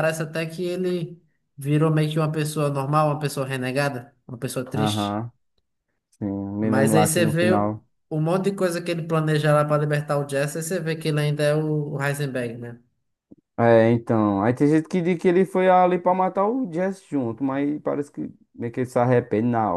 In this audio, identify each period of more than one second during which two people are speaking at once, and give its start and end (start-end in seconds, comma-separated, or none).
6.6-7.8